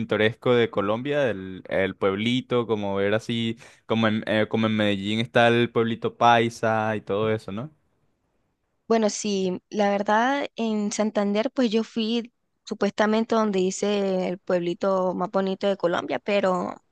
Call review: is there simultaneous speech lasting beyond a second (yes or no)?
no